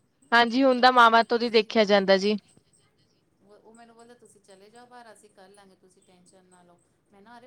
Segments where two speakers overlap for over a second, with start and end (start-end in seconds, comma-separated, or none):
0.8-2.3